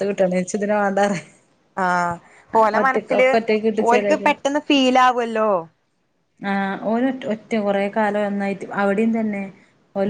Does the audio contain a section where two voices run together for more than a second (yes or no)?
no